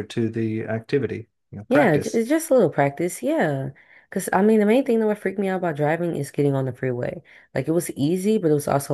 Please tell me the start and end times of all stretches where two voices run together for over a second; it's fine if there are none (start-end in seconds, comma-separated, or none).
none